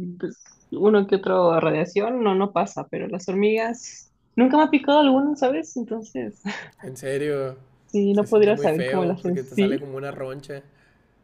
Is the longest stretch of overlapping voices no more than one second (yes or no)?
no